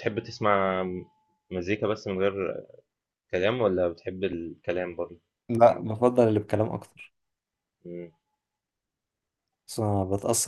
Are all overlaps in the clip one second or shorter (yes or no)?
yes